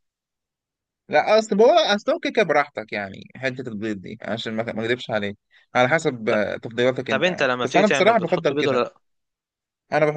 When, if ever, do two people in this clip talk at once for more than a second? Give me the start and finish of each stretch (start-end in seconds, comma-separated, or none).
7.1-8.8